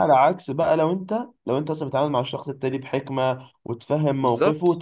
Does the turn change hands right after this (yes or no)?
no